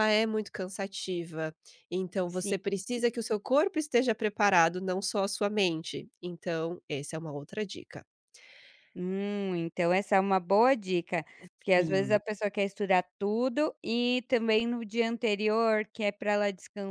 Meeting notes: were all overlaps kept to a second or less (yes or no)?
yes